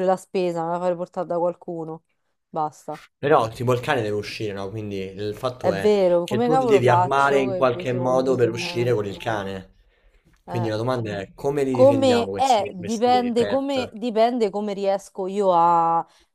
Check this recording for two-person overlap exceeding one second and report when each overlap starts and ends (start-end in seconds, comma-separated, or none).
5.6-8.9, 11.7-13.9